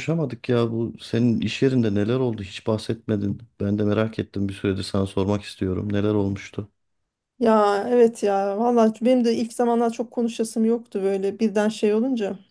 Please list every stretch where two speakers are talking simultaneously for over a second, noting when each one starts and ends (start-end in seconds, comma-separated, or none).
none